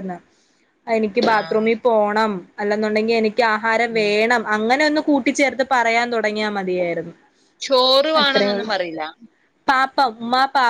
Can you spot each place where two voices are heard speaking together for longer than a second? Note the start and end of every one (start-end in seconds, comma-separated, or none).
none